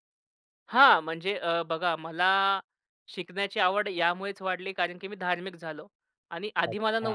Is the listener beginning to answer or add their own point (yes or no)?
no